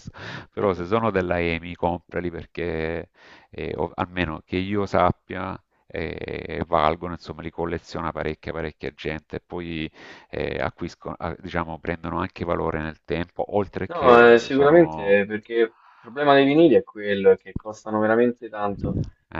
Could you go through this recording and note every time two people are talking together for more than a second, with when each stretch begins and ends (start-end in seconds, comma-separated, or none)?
13.9-15.2